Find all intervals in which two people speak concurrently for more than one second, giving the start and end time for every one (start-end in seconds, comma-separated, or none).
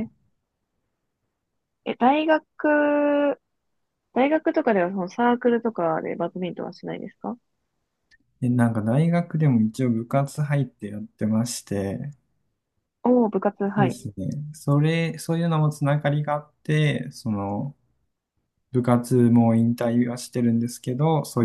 none